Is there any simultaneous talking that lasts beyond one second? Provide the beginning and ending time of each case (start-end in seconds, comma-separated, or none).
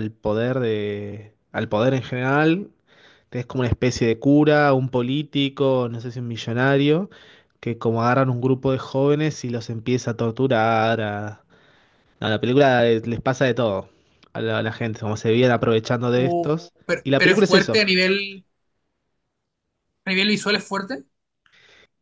16.1-17.9